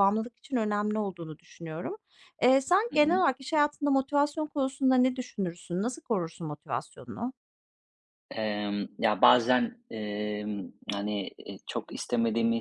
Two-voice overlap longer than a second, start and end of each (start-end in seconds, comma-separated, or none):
none